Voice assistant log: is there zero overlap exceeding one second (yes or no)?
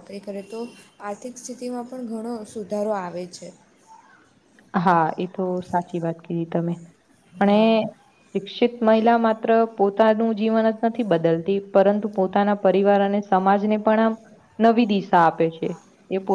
yes